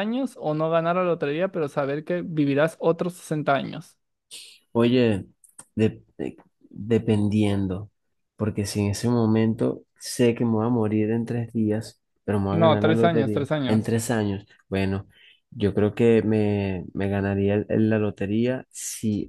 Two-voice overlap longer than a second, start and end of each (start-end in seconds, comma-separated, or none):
12.5-14.0